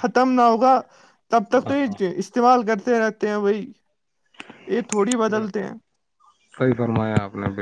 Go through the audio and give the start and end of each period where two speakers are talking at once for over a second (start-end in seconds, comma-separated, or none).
none